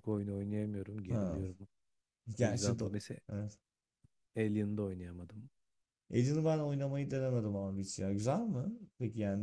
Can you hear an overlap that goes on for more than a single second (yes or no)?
no